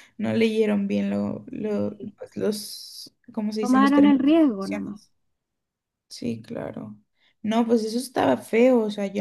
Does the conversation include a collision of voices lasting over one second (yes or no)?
yes